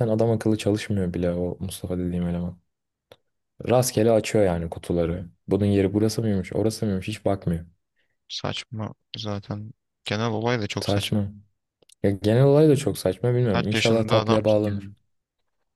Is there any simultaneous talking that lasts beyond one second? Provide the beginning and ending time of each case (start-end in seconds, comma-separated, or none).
13.5-14.9